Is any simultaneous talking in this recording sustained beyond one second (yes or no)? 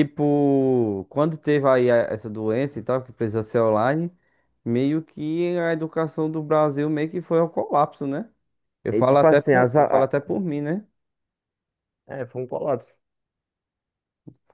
yes